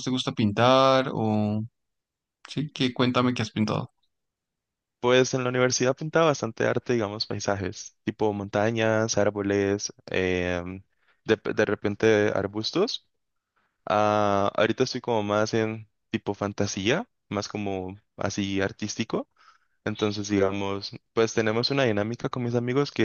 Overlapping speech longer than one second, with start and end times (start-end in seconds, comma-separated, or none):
none